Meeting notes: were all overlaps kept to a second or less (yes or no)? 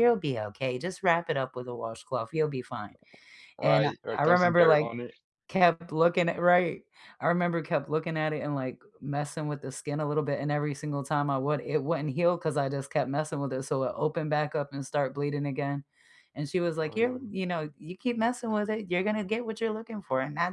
no